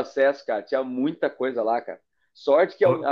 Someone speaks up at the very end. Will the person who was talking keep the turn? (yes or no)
yes